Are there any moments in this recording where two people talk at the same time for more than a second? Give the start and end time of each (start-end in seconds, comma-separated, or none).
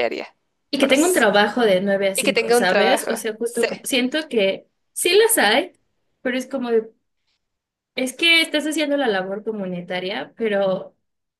2.1-3.7